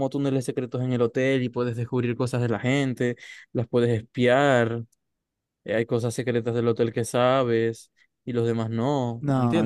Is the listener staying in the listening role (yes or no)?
no